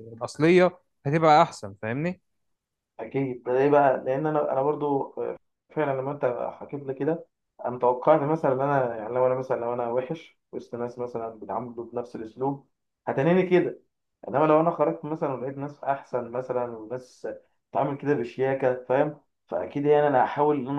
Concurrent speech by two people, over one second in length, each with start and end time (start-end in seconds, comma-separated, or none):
none